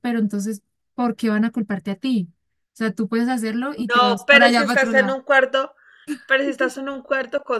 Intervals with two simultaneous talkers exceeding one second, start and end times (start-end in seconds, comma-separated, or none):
3.9-5.2